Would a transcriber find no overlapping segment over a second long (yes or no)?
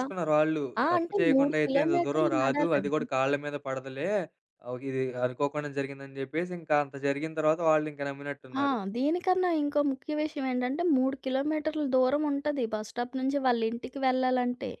no